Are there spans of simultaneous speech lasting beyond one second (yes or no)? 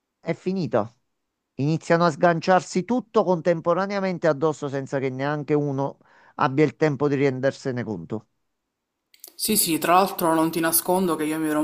no